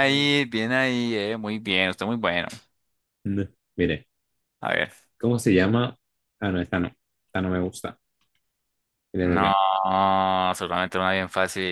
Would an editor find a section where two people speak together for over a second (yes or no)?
no